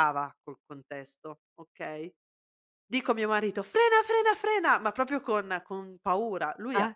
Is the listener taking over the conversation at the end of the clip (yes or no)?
no